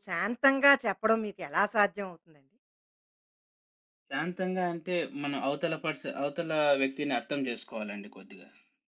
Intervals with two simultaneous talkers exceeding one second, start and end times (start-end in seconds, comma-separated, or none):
none